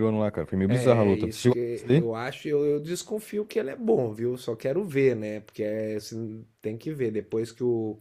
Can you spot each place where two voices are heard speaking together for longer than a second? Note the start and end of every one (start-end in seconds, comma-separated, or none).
0.7-2.1